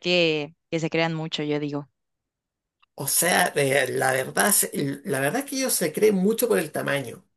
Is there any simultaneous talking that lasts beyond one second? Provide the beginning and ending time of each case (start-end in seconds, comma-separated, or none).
none